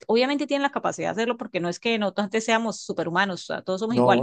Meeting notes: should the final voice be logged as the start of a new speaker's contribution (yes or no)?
no